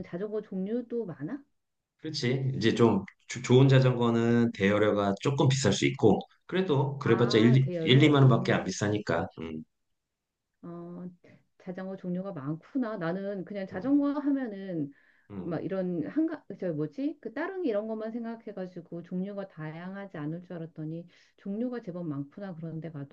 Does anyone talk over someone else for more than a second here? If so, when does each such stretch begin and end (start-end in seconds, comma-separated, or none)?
7.0-8.8